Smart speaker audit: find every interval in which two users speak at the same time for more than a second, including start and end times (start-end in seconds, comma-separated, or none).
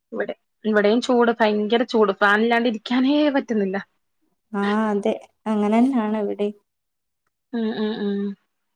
none